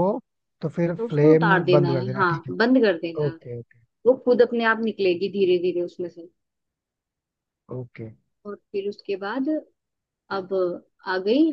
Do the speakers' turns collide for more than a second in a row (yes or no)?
yes